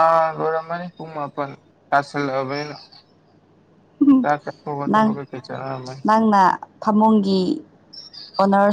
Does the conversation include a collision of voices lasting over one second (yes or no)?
no